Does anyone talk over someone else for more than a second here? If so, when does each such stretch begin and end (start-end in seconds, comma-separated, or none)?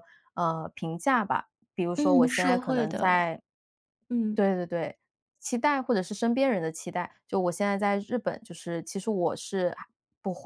2.0-3.3